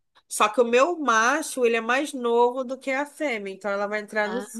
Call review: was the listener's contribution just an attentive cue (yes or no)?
yes